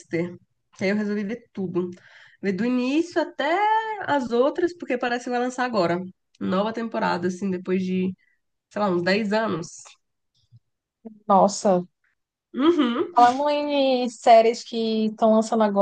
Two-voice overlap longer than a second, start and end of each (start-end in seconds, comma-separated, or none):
none